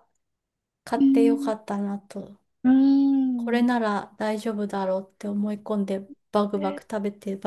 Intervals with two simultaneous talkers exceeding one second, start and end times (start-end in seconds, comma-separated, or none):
none